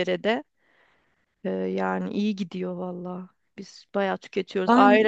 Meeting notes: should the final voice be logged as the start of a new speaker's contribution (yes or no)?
no